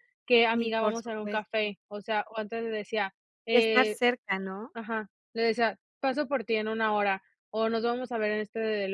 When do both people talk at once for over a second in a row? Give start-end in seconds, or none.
0.5-1.8